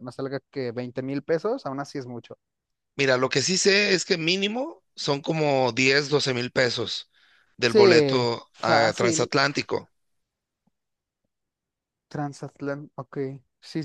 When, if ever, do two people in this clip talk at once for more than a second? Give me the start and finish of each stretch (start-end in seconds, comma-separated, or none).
7.7-9.3